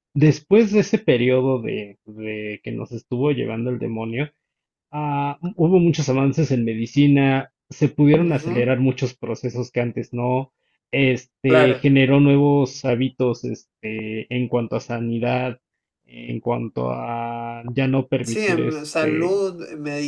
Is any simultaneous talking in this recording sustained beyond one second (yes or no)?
yes